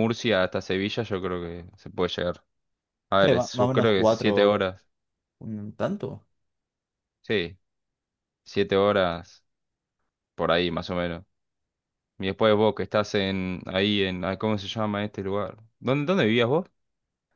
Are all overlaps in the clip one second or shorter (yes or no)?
no